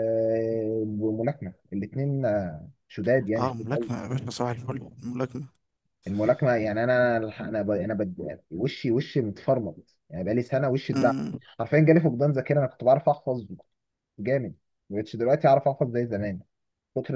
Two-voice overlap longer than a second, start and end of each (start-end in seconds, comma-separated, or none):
none